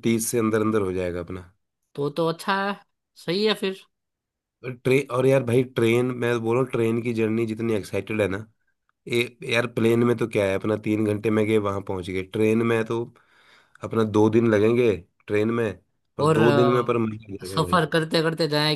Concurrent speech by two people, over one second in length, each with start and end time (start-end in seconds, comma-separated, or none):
16.3-17.9